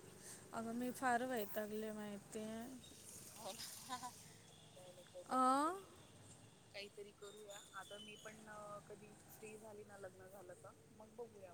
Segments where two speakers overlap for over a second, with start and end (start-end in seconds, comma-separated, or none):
none